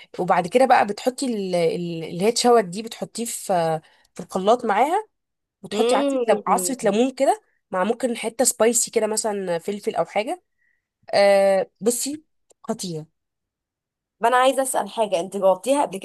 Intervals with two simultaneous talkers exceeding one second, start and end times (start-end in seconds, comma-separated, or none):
5.7-7.0